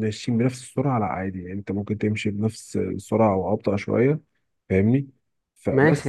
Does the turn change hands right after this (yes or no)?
yes